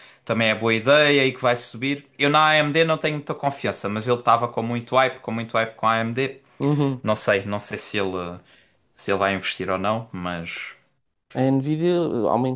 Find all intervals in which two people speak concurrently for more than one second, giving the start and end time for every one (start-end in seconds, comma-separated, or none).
none